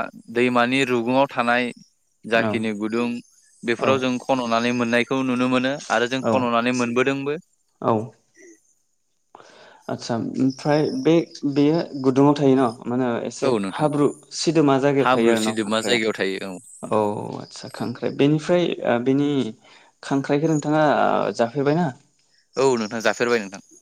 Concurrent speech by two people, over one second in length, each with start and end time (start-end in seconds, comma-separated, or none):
15.0-17.0